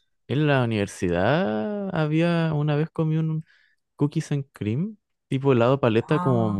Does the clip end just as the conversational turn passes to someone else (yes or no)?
no